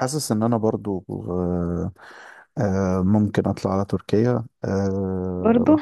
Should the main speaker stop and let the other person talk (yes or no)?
no